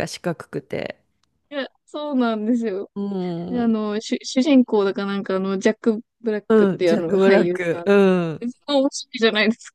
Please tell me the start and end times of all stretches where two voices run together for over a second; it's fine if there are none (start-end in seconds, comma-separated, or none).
6.5-7.9